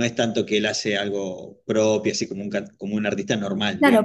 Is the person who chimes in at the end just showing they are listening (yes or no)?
no